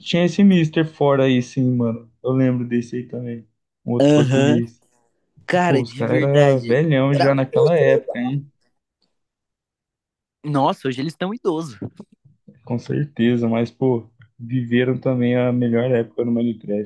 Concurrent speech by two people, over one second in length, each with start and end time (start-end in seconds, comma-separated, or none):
5.7-8.2